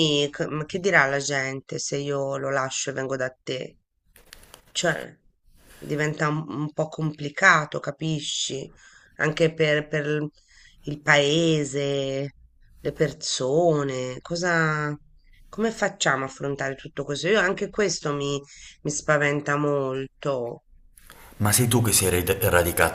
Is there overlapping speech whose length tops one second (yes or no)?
no